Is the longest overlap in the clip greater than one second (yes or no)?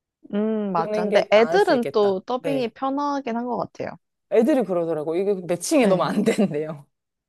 yes